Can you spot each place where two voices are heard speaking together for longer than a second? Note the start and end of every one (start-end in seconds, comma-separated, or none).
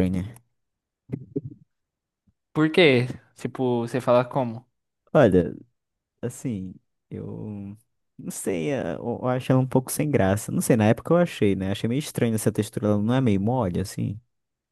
none